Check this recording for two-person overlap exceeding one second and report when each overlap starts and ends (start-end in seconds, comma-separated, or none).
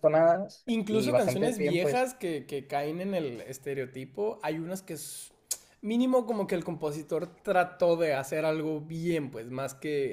0.7-2.1